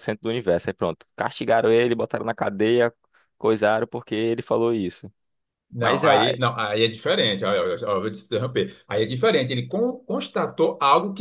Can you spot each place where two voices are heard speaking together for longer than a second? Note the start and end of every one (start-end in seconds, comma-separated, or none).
none